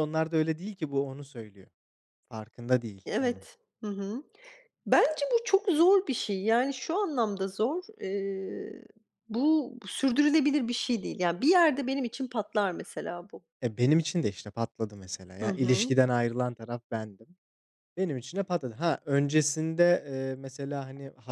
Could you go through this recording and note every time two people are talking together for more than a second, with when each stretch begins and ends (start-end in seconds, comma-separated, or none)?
none